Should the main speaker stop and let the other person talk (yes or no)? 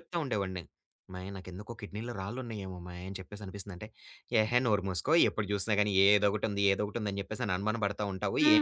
yes